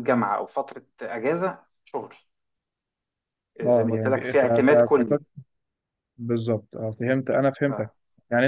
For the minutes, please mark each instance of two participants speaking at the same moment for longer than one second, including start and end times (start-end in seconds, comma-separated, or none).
3.6-5.2